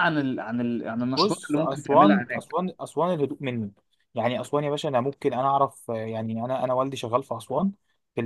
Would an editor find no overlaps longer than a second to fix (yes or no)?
no